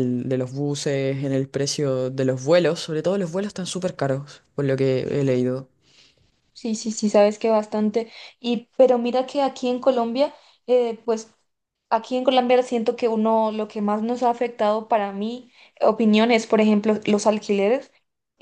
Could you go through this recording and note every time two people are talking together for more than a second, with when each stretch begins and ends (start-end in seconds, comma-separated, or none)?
none